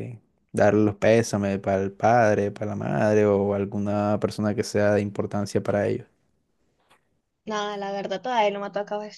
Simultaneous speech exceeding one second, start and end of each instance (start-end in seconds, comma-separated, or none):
none